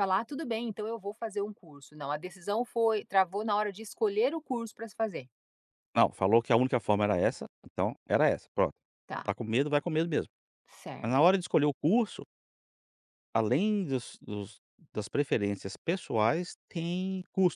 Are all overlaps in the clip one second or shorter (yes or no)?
yes